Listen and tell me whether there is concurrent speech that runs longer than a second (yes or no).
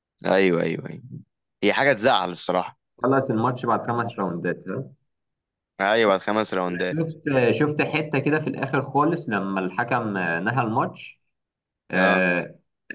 no